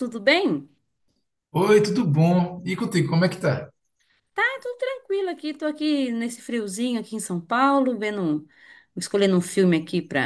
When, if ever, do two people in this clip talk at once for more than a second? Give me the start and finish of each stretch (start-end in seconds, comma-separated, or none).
none